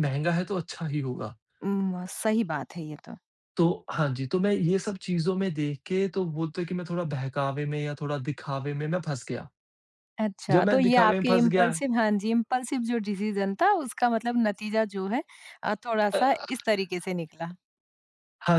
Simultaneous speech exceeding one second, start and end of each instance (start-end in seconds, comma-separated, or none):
10.5-11.7